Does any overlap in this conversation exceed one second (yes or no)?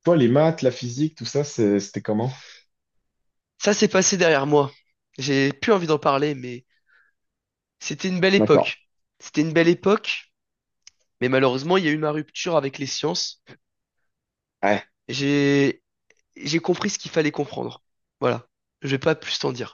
no